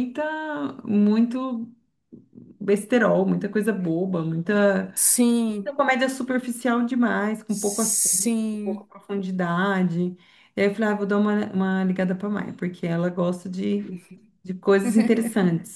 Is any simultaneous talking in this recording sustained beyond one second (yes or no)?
yes